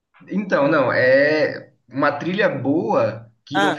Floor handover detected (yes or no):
no